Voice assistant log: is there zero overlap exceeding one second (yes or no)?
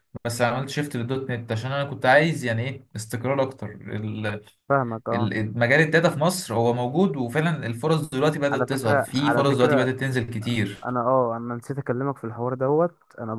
no